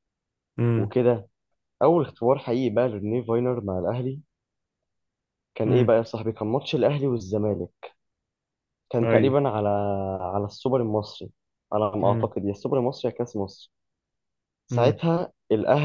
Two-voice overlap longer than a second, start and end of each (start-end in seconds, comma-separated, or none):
none